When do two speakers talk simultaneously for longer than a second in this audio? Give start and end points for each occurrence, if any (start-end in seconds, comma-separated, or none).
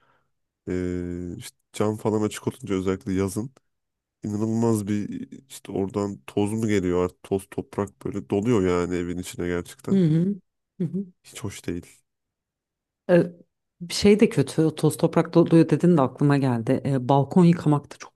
none